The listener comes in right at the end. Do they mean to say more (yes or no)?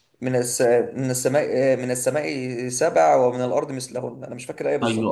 yes